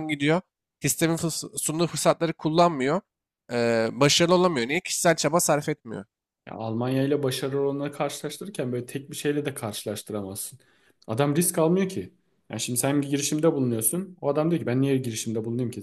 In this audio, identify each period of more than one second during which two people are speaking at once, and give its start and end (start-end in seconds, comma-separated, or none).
none